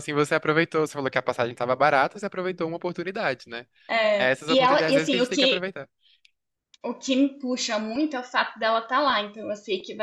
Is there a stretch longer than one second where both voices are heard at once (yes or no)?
yes